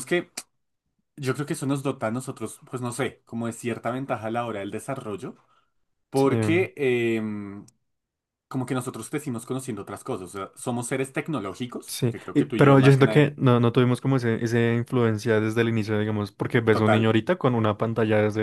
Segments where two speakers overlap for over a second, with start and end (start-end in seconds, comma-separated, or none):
11.9-13.3